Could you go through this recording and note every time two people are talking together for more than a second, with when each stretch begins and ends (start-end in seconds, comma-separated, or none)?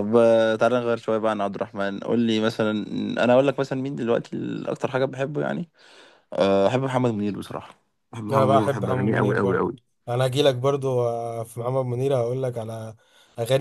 8.3-9.7